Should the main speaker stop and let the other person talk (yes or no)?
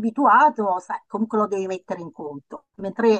no